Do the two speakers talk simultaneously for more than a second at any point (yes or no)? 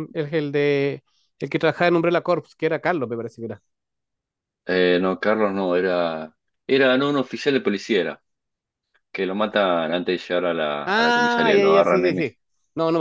yes